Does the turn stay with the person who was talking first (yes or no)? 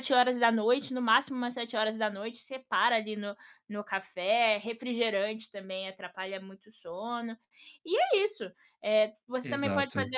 yes